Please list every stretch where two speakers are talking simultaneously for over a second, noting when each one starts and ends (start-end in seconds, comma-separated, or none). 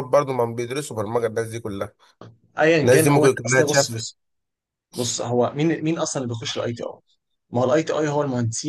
2.8-4.1